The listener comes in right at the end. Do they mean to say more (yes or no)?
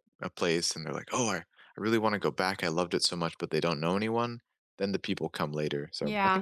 yes